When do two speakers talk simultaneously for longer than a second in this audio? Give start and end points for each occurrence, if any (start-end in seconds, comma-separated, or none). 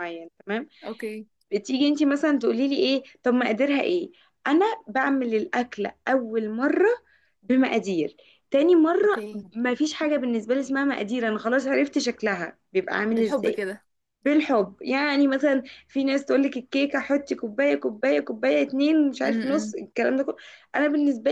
none